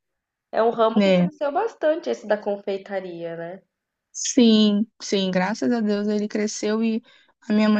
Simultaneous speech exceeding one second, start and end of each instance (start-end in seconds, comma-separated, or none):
none